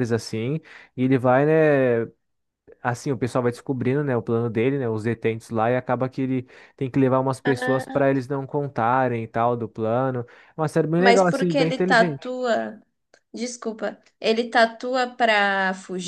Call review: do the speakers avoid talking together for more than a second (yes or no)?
no